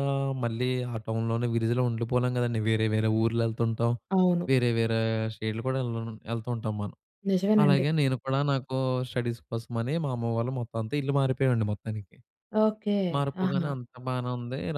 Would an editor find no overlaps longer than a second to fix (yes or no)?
yes